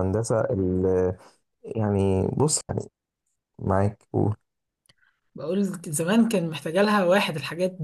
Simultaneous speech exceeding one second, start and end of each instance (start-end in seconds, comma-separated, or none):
none